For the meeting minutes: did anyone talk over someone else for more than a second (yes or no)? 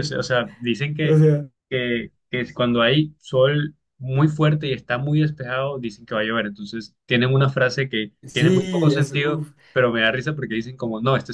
yes